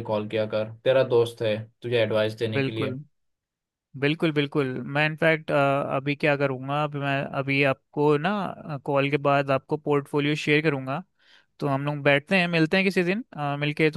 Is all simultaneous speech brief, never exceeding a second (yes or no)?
yes